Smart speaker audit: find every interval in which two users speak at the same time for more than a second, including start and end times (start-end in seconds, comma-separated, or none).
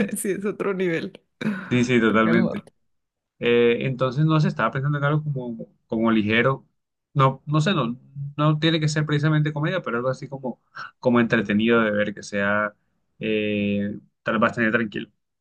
none